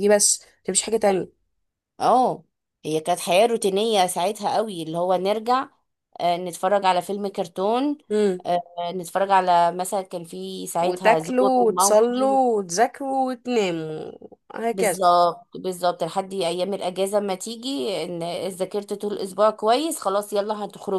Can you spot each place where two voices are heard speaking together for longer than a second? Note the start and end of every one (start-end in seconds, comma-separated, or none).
10.8-12.4